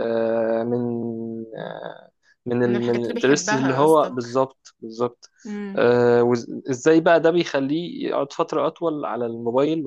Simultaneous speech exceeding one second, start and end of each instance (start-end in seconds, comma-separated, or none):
2.6-4.4